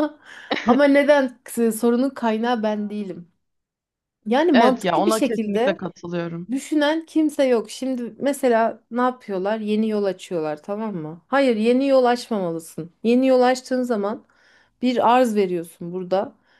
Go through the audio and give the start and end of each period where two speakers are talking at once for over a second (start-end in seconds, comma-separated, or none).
4.5-5.8